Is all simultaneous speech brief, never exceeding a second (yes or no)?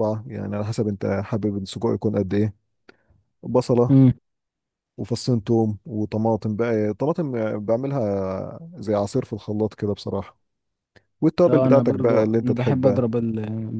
no